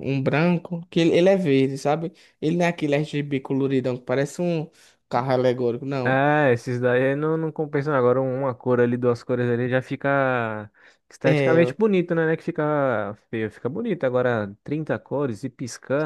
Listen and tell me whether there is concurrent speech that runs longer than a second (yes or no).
no